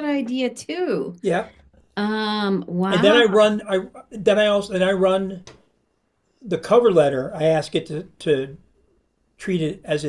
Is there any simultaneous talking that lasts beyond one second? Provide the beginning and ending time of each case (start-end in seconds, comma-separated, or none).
none